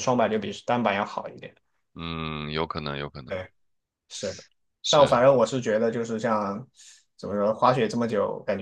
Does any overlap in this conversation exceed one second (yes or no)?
no